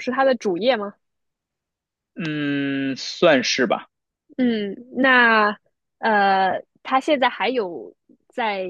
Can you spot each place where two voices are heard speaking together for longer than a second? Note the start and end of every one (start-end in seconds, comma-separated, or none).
none